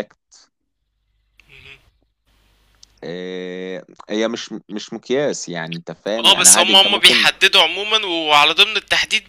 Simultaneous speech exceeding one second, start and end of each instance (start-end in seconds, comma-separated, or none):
6.2-7.4